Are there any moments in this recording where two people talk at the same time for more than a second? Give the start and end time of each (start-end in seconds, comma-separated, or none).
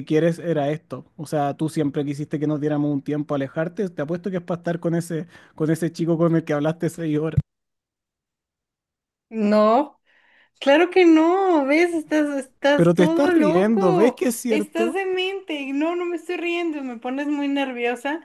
12.8-15.0